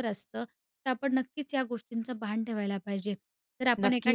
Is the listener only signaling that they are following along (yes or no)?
no